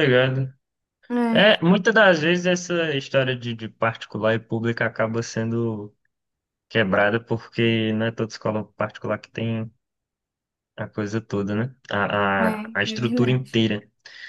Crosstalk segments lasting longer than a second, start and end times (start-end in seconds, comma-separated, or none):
12.4-13.6